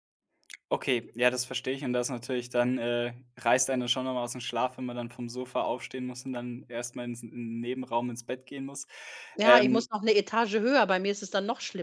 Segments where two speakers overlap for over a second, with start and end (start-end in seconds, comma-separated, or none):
none